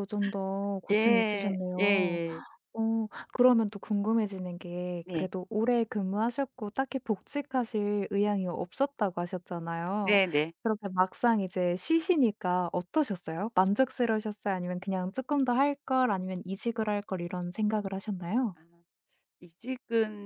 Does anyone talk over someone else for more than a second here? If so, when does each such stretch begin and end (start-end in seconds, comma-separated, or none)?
0.9-2.2